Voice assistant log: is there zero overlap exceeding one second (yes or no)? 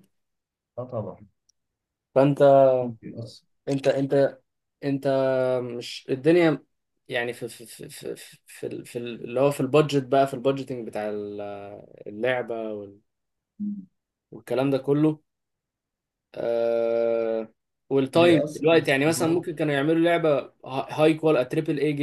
no